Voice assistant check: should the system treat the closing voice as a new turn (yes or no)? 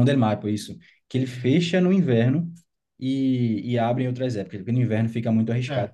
yes